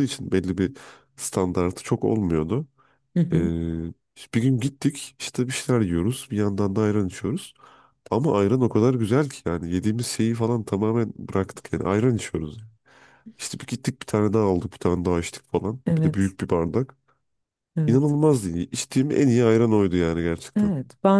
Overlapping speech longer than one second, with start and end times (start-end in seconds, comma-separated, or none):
none